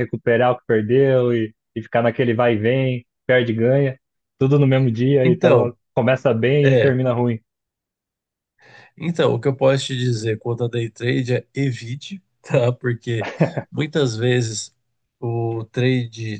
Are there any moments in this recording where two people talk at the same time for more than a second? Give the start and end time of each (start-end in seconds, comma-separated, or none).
none